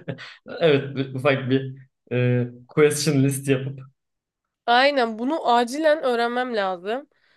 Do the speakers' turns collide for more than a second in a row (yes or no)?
no